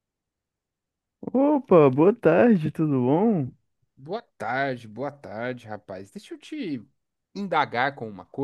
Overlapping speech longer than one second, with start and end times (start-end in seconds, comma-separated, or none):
none